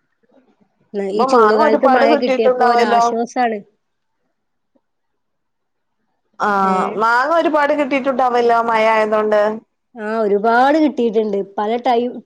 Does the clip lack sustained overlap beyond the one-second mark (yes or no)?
no